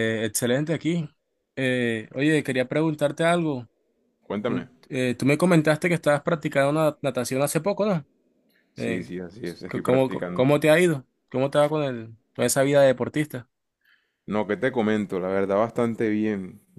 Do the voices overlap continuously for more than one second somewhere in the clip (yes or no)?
yes